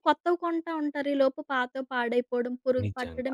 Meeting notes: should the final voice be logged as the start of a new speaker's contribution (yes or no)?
no